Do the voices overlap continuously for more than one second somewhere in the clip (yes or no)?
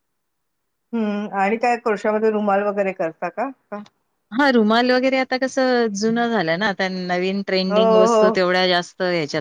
no